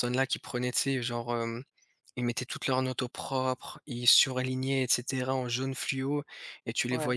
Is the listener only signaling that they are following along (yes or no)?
yes